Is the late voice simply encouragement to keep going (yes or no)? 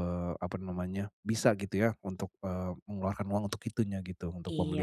no